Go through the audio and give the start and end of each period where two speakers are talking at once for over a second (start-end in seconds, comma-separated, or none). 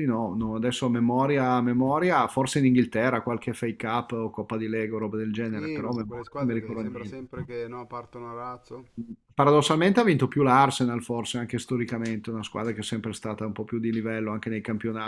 5.4-7.2